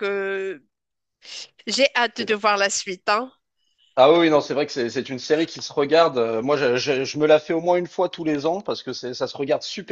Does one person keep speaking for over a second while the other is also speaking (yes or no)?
no